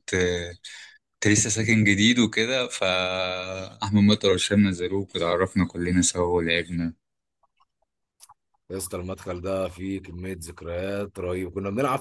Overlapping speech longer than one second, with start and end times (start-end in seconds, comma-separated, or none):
none